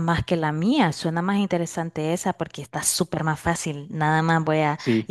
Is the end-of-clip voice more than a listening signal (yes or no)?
no